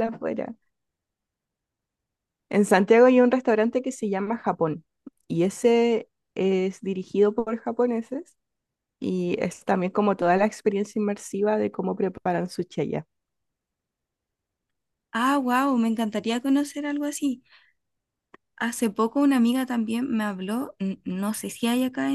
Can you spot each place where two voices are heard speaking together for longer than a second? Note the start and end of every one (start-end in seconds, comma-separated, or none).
none